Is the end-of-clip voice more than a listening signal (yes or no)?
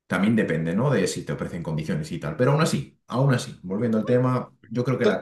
no